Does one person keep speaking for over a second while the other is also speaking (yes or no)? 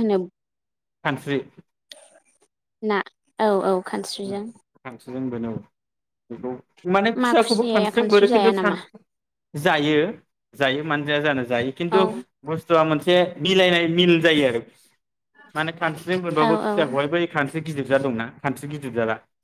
yes